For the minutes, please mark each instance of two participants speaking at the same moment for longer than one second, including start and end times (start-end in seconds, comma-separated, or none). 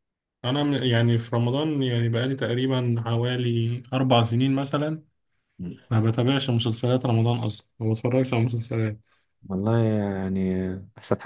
none